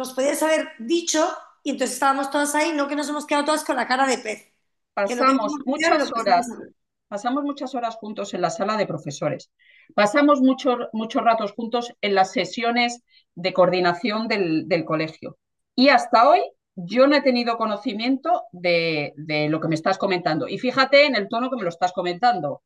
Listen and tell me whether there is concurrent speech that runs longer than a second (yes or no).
yes